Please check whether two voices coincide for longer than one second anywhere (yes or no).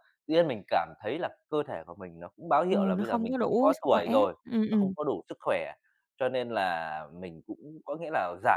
yes